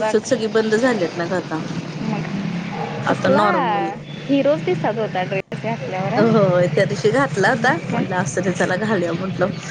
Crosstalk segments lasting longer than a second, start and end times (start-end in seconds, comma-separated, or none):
none